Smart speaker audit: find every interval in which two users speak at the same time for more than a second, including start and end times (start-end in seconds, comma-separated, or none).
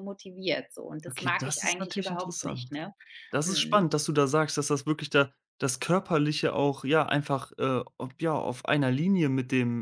1.1-2.8